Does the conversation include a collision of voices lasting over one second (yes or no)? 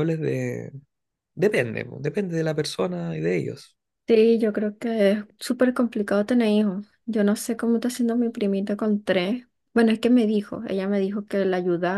no